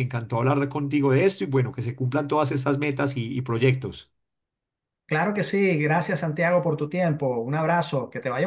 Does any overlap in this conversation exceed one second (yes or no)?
no